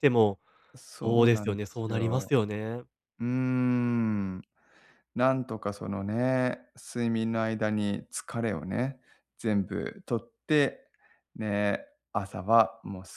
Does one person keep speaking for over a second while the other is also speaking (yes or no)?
yes